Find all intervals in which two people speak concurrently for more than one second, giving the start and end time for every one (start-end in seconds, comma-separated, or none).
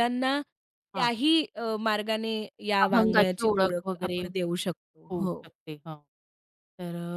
2.9-4.2